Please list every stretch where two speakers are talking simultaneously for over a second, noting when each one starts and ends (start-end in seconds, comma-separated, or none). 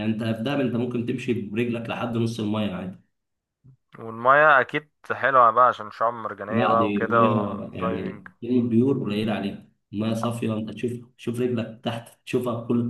6.5-8.3